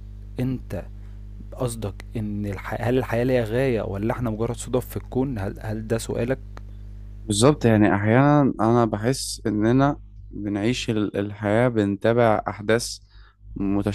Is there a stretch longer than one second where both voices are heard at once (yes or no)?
no